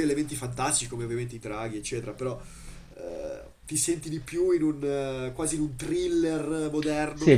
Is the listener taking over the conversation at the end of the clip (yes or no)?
yes